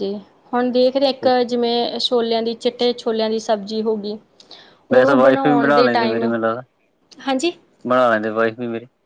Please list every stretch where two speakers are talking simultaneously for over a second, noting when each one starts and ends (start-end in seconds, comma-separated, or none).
5.0-6.3